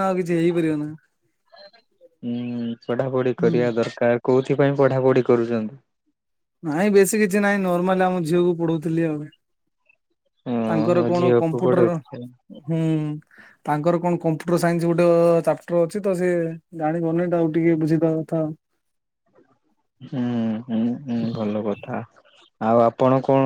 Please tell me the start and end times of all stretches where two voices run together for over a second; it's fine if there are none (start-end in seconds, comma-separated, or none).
10.7-12.3